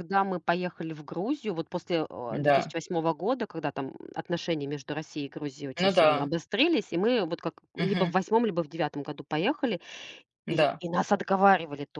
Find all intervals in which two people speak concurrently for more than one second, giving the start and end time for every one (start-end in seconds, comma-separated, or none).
none